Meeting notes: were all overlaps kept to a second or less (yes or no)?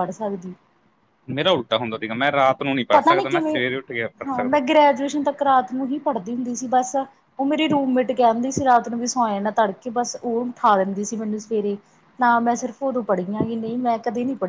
yes